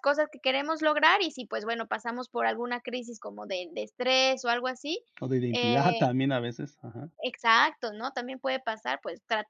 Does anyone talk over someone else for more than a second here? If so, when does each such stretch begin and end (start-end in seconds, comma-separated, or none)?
none